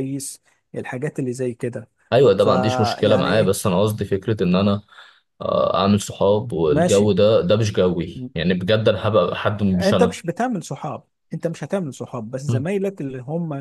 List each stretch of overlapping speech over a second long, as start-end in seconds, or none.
2.4-3.6